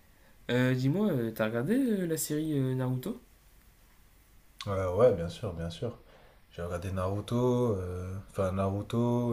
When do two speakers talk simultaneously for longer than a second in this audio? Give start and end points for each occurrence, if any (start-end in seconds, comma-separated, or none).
none